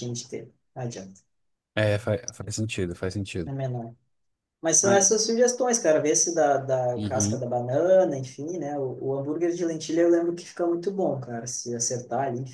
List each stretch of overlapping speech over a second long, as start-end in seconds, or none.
none